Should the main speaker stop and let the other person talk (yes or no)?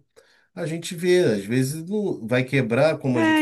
yes